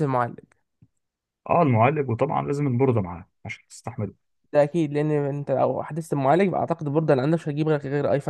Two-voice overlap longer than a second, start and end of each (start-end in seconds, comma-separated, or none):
none